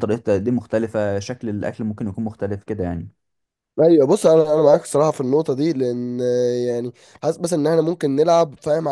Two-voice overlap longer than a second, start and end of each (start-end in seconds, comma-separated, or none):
none